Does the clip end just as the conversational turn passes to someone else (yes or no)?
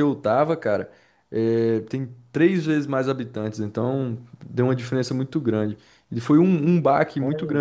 no